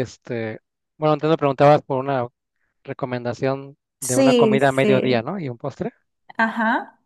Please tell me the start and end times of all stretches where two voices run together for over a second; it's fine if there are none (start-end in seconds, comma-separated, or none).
4.0-5.3